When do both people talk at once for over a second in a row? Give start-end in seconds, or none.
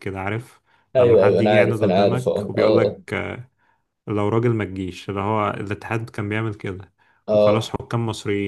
1.0-3.0